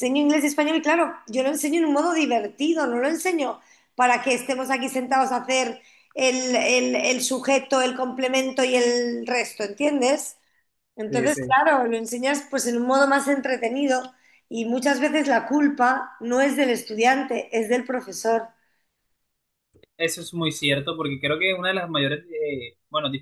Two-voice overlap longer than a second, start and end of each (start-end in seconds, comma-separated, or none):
none